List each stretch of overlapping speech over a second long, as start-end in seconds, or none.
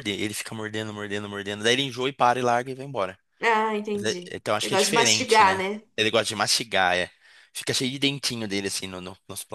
3.9-5.8